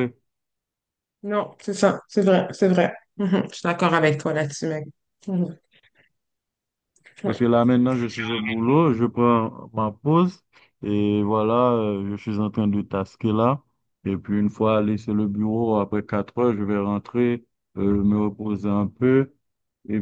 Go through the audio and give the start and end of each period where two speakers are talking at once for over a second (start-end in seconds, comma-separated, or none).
none